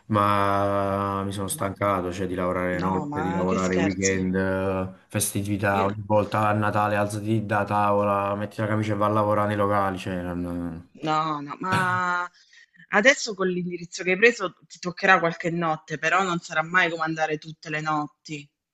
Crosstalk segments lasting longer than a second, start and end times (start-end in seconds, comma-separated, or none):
2.8-4.2